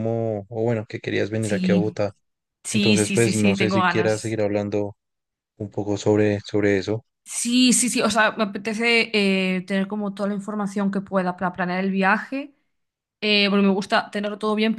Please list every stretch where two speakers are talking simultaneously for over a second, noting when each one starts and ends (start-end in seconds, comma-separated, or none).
2.7-4.4